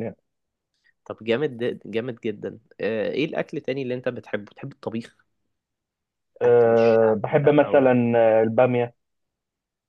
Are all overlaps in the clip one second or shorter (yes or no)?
no